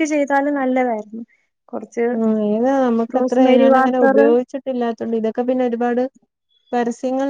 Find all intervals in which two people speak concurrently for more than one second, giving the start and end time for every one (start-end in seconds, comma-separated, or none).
none